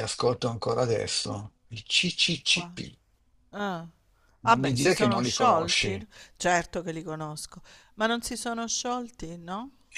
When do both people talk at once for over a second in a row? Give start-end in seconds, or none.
4.5-6.1